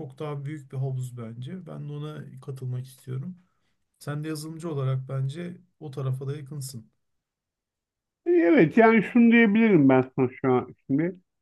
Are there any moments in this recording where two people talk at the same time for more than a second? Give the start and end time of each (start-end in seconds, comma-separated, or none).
none